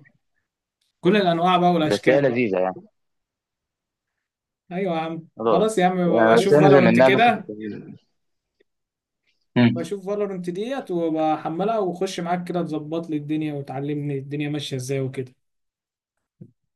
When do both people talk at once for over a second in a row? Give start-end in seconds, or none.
5.4-7.5